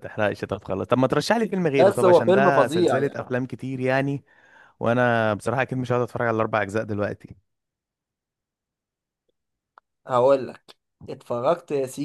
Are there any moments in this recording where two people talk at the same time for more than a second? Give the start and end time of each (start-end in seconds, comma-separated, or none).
1.7-3.2